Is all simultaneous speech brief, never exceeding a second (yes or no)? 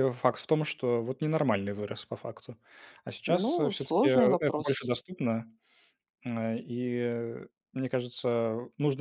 no